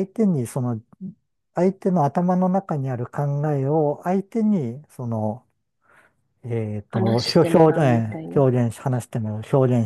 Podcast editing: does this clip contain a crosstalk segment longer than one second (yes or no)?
yes